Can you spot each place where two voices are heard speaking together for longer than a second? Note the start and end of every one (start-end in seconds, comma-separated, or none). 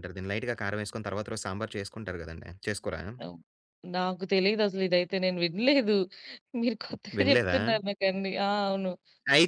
none